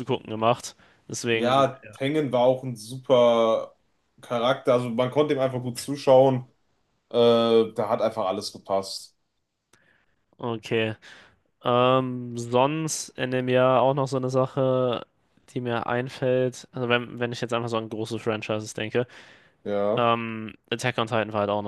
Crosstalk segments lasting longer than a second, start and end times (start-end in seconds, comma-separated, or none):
none